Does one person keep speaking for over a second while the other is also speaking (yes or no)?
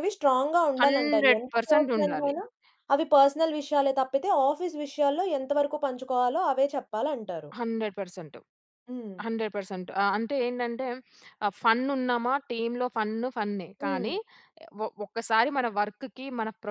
yes